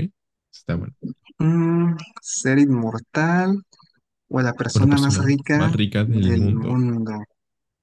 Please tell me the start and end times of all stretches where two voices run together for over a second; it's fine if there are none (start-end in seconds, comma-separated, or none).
4.8-6.8